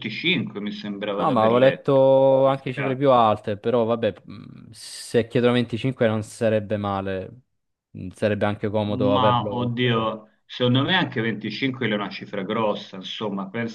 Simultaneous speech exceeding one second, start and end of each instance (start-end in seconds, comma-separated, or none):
1.2-3.3, 8.9-10.1